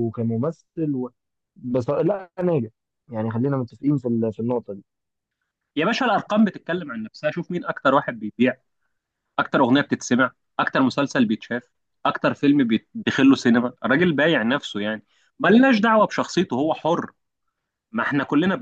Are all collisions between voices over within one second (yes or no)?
yes